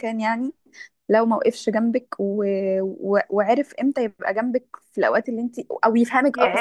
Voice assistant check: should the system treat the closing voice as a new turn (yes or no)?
yes